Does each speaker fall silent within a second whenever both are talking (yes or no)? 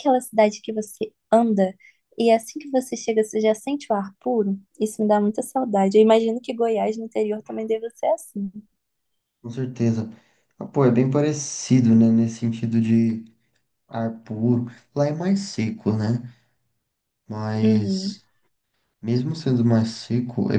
yes